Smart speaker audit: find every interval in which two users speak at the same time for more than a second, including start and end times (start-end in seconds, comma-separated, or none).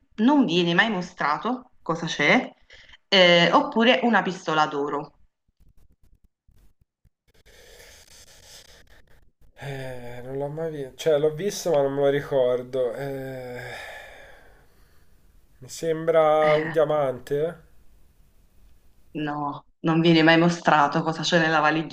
none